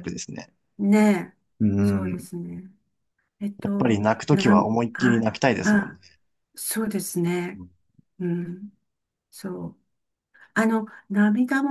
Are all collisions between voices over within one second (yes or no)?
no